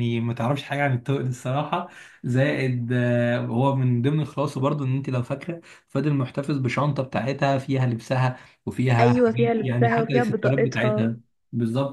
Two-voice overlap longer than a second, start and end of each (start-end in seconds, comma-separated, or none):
9.0-11.1